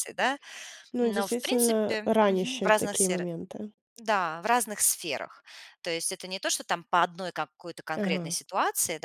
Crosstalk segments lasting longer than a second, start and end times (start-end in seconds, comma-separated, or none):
1.0-3.3